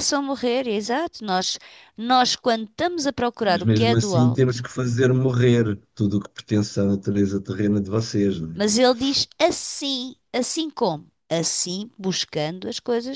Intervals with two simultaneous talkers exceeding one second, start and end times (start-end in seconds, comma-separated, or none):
3.4-4.7